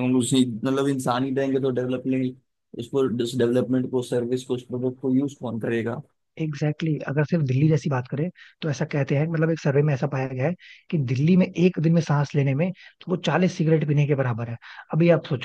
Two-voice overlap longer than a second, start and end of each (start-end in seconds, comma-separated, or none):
none